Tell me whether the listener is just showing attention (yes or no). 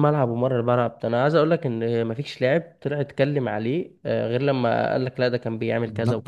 no